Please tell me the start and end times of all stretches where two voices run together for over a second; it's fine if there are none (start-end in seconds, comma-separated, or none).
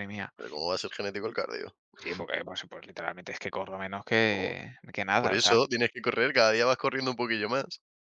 none